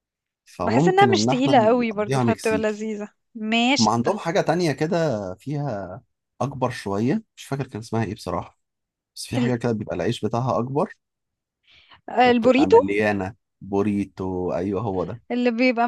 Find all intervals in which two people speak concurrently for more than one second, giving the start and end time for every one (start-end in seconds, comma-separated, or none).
0.6-2.9